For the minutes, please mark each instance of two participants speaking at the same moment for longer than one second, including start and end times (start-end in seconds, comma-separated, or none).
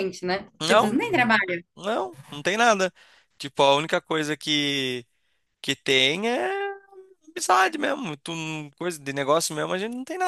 none